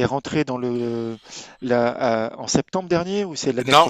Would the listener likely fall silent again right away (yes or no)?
no